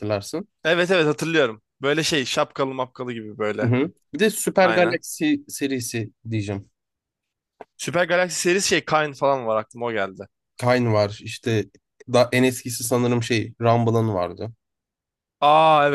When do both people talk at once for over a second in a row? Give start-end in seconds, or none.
none